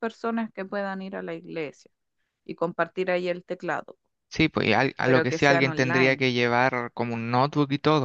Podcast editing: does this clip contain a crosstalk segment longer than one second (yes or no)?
yes